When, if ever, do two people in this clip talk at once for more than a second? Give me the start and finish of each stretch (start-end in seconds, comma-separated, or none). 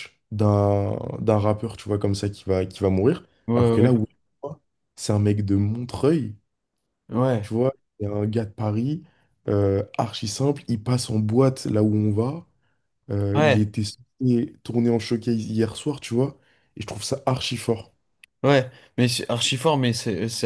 none